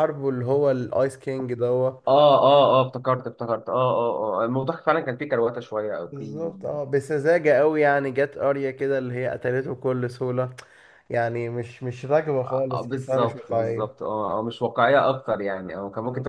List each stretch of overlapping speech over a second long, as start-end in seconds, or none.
12.4-14.0